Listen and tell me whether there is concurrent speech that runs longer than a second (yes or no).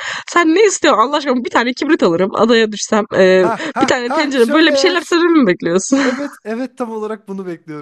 yes